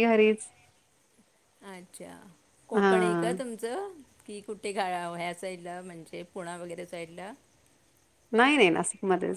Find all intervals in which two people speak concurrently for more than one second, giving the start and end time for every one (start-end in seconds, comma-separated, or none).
none